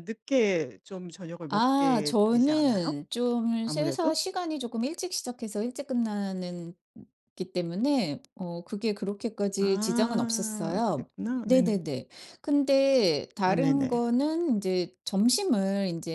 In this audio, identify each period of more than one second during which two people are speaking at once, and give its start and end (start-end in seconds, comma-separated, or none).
1.5-3.0, 9.6-11.1